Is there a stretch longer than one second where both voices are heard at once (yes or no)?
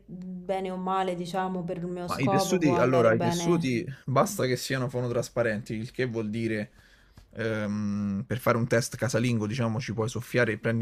yes